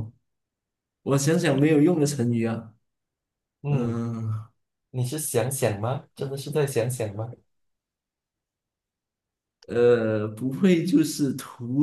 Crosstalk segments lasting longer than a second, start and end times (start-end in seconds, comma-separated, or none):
none